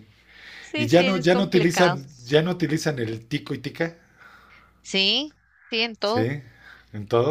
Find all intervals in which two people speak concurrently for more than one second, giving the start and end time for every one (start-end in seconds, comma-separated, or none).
0.8-2.0